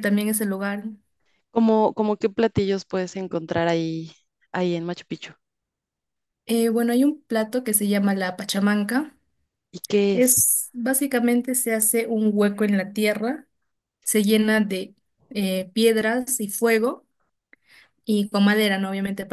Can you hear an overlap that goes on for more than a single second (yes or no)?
no